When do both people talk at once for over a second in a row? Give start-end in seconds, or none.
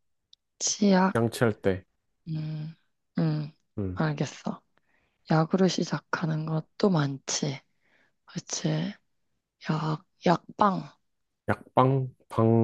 none